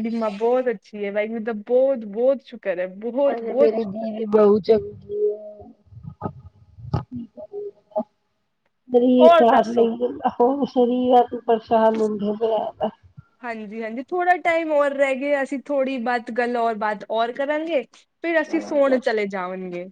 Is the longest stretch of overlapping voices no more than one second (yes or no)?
yes